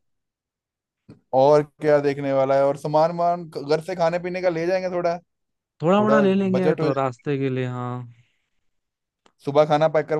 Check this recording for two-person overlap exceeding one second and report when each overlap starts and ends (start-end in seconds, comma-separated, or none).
5.8-7.2